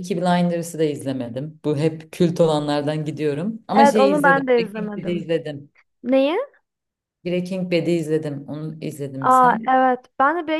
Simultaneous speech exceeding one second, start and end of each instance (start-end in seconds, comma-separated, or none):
3.8-5.3